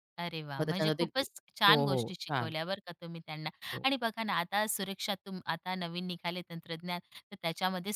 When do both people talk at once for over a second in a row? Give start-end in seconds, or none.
0.6-2.5